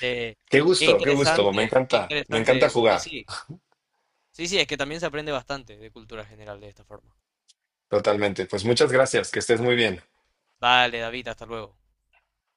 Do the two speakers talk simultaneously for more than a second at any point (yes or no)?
yes